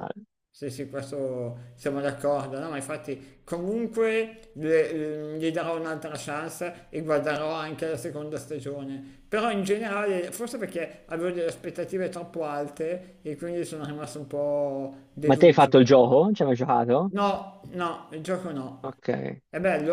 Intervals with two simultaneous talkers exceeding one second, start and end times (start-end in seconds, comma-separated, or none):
none